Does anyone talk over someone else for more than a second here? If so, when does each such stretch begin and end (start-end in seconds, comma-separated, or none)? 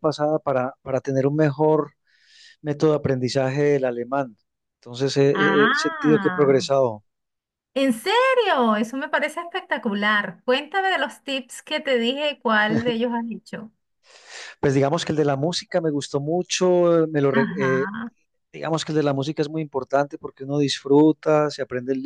5.3-6.6